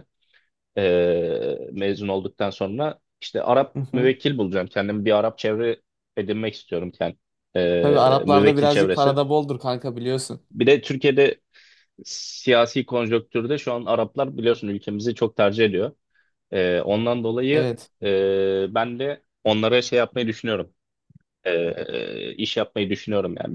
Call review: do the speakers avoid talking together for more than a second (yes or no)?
no